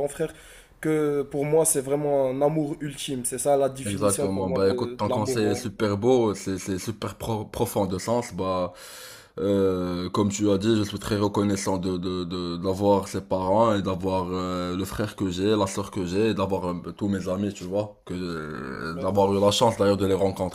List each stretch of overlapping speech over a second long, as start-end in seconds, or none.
3.8-5.7